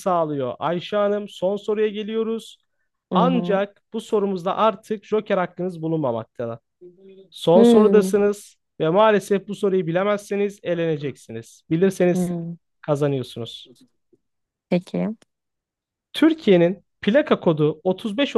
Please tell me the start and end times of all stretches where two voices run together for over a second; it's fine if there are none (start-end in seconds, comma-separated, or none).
none